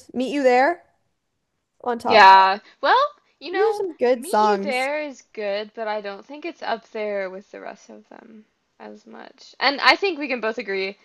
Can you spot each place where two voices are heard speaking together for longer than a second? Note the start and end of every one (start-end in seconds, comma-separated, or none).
3.5-4.9